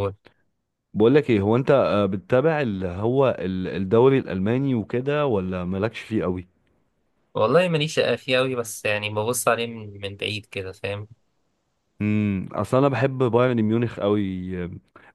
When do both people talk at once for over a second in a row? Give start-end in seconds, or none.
none